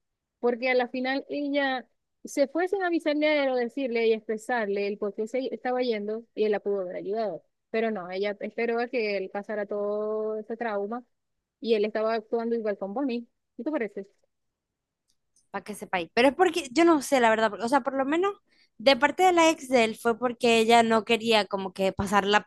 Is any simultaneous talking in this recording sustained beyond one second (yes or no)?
no